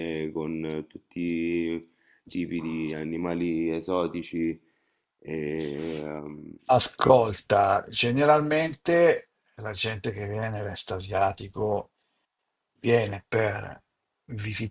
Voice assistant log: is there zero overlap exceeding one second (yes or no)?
yes